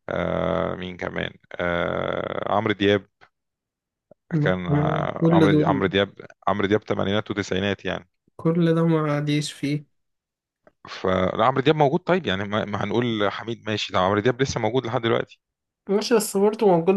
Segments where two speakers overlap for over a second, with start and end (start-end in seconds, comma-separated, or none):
4.4-5.9